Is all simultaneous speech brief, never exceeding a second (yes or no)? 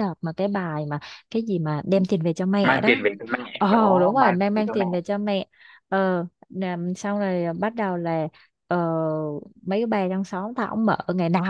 no